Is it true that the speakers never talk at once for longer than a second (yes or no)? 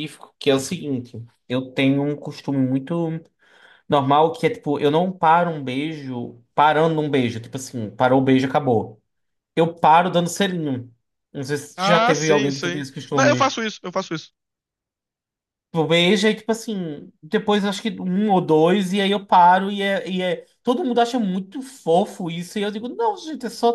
no